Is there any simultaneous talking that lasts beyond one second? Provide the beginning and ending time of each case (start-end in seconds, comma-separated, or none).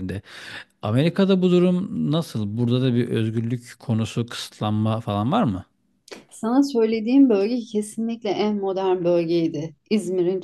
none